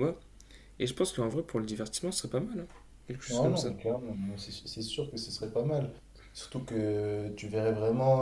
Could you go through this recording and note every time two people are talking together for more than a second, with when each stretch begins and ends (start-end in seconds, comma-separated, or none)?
none